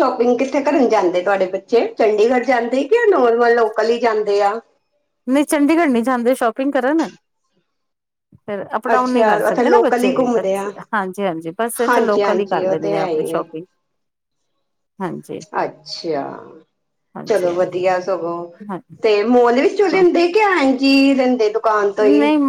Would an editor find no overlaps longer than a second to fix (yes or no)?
no